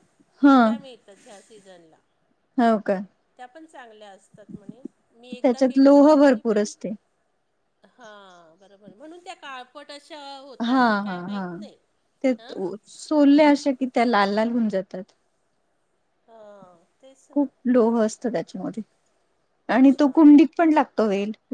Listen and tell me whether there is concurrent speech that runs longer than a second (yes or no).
yes